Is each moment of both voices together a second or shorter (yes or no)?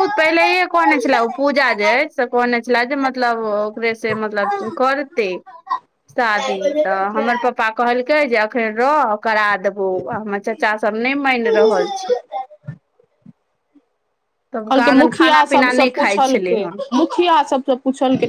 no